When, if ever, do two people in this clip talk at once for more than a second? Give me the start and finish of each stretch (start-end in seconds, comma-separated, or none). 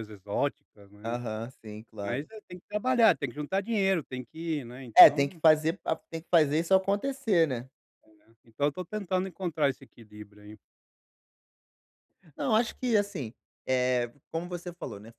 none